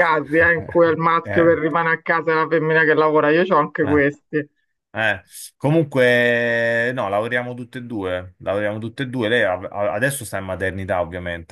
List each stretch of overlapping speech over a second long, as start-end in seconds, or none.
none